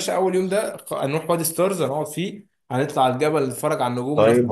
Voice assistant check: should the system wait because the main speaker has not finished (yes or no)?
no